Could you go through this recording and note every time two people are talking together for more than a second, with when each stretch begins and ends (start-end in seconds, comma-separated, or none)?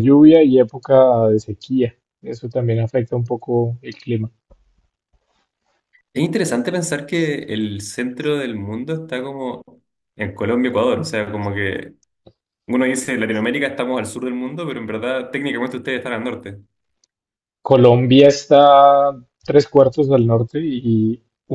none